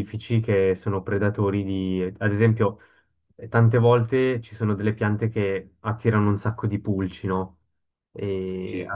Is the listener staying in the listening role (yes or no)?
yes